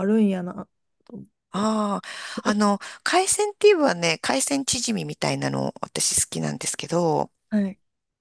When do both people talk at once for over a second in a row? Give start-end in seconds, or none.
none